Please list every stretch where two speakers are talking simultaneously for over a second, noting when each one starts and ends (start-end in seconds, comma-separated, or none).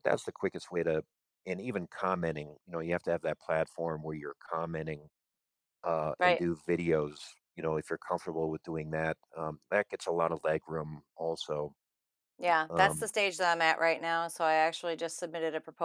none